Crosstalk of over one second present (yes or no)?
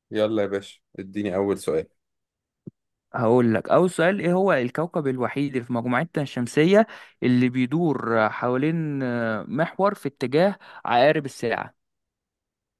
no